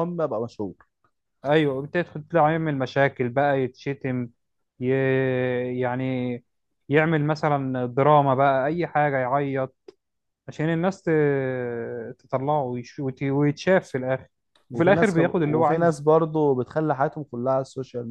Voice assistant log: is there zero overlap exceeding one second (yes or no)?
no